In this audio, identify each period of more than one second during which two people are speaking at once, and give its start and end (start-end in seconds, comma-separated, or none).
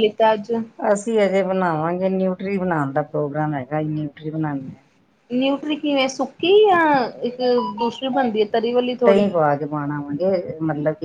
none